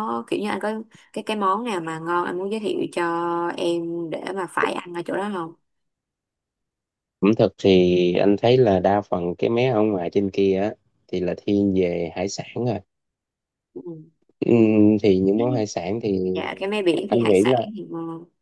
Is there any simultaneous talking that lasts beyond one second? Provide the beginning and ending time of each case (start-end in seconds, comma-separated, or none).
none